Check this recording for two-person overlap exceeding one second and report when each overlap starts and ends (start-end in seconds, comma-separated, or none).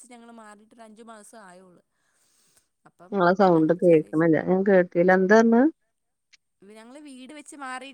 none